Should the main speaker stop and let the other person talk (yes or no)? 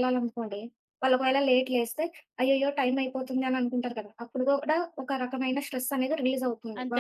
yes